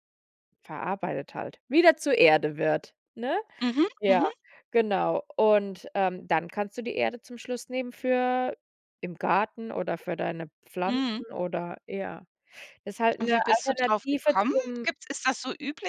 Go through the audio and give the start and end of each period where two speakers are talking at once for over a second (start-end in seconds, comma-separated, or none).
13.2-14.9